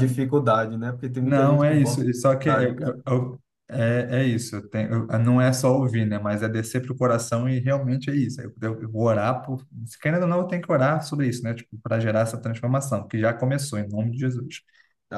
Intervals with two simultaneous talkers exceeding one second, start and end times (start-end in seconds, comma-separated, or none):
1.2-3.0